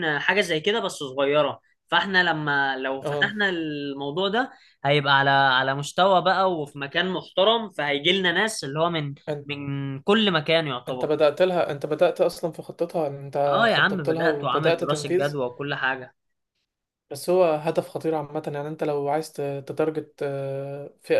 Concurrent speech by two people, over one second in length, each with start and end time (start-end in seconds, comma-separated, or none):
13.5-15.4